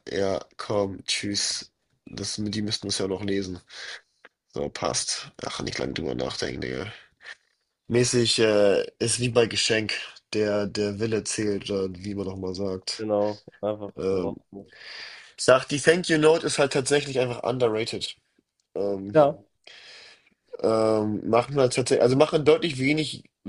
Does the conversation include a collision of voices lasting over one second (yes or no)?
no